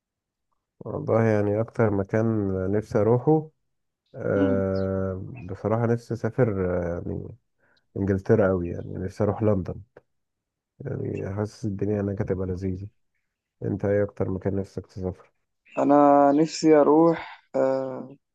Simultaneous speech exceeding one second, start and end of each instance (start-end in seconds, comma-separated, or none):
none